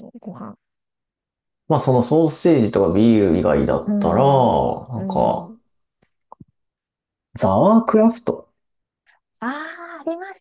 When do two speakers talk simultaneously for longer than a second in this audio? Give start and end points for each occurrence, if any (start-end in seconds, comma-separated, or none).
none